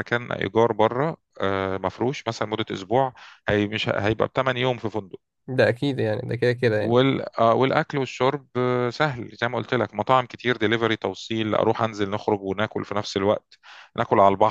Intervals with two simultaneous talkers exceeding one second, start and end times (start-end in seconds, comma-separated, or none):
none